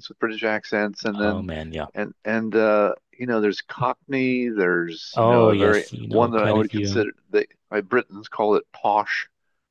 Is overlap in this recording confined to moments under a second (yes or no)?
no